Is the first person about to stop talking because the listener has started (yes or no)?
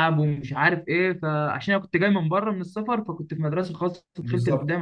yes